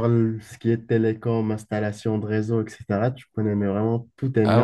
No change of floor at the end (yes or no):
no